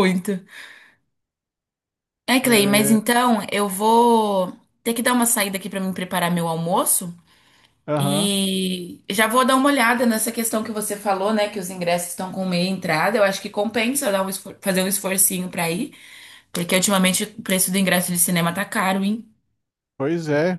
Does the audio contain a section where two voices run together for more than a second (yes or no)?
no